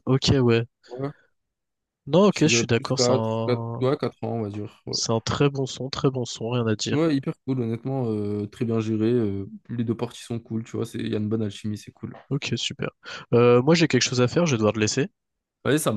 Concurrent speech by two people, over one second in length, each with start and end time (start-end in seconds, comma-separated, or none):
2.3-3.9